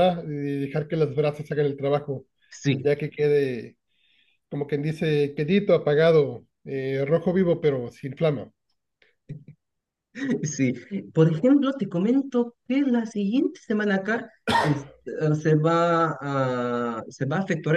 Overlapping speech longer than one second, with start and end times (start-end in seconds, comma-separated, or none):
none